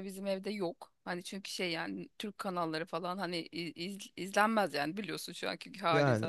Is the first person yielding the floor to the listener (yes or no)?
no